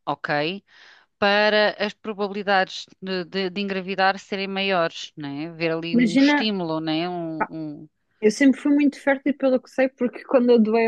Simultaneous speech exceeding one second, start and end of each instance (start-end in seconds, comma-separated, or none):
none